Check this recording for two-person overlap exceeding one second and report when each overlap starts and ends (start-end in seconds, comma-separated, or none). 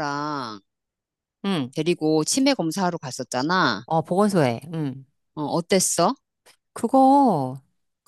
none